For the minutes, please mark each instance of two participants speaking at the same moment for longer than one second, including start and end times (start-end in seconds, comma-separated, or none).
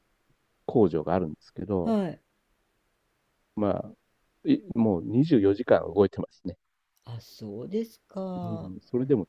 none